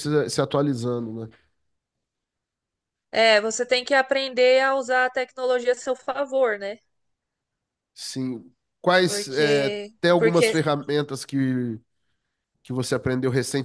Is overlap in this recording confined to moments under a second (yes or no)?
no